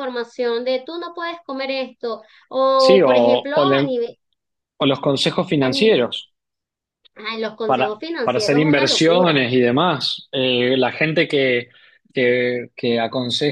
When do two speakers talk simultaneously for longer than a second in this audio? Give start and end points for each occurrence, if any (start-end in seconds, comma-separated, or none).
2.7-4.0, 7.7-9.5